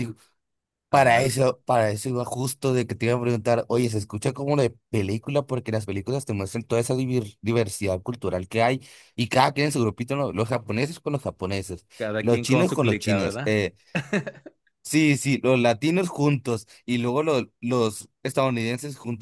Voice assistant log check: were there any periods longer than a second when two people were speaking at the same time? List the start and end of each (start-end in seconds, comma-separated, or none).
12.2-13.6